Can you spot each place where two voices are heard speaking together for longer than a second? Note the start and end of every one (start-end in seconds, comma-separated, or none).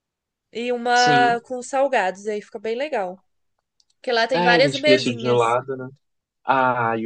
4.3-5.6